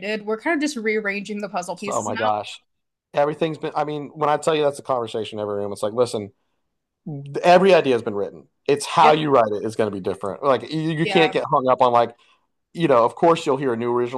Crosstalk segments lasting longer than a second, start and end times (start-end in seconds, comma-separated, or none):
none